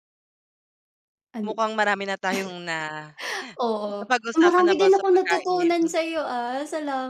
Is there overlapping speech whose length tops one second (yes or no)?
yes